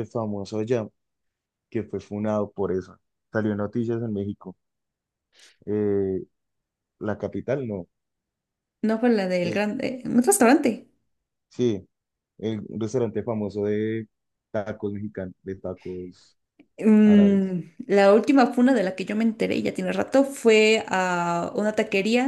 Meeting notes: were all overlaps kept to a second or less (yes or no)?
yes